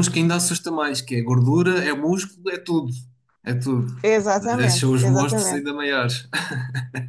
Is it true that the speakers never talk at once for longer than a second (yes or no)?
no